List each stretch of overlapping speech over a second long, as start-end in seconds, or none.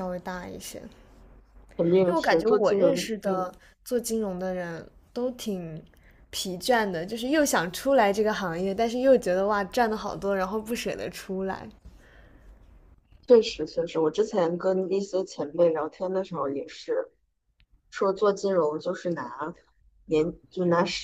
2.1-3.5